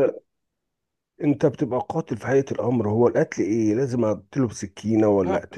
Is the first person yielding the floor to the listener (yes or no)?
no